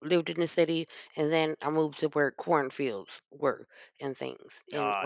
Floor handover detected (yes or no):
no